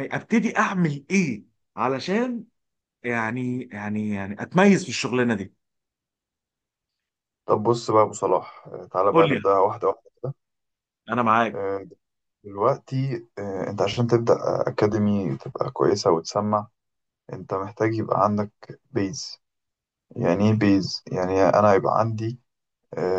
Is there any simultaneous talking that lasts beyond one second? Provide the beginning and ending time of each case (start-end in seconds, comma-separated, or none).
none